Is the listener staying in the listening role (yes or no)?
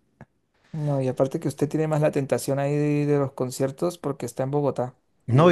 no